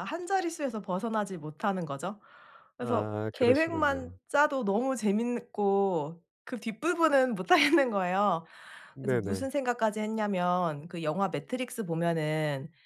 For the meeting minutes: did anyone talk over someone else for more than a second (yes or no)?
yes